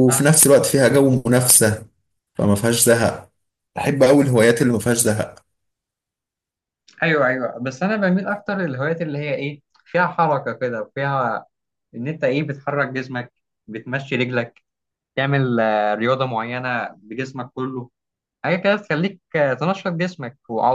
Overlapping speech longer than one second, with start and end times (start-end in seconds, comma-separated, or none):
none